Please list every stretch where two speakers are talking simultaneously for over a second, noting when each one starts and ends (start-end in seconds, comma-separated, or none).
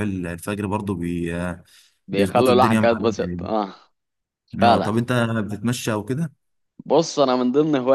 2.1-3.5